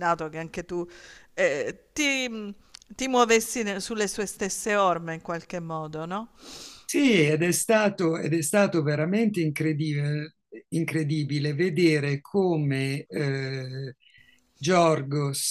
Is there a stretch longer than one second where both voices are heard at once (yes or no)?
no